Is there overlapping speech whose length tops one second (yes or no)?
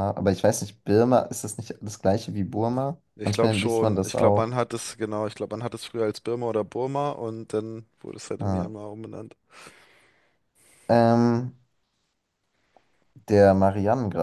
yes